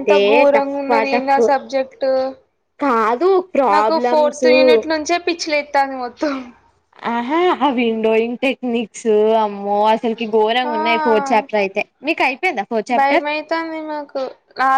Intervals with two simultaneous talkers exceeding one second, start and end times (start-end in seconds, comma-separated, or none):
none